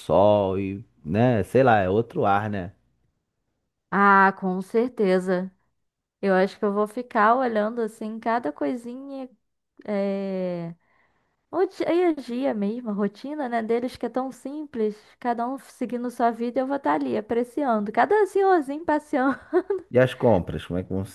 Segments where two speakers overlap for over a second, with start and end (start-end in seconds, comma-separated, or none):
none